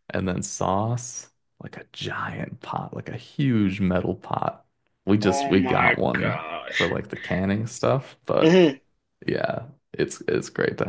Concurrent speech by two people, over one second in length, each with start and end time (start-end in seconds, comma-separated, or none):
5.2-6.9